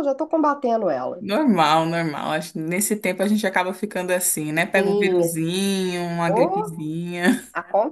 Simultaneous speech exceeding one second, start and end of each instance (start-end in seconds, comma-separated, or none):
none